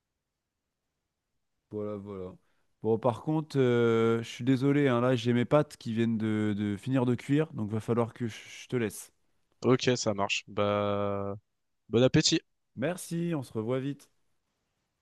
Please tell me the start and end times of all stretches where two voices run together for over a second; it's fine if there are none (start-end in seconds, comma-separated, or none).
none